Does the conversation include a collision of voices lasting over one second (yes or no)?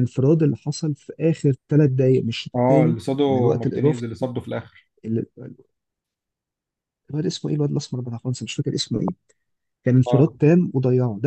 yes